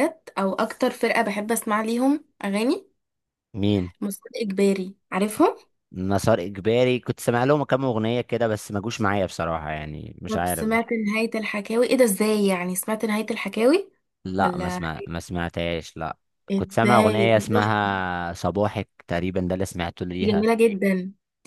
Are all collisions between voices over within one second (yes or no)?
no